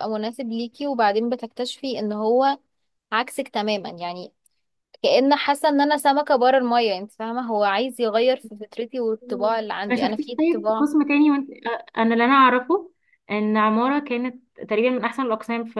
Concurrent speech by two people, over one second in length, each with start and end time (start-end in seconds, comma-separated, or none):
9.2-10.9